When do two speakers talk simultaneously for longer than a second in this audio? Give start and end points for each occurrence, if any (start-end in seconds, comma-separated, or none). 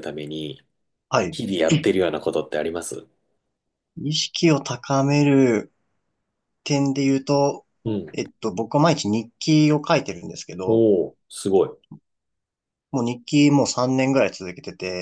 none